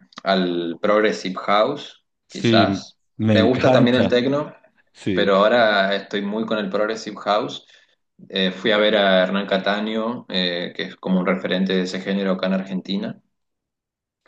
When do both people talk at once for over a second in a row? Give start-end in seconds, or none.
2.3-4.2